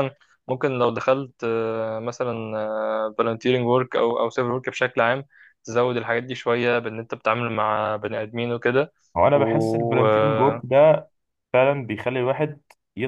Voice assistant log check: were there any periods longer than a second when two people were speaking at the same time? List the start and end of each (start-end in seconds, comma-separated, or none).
9.3-10.6